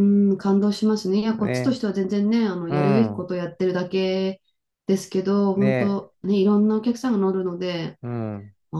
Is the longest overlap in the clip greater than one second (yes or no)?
no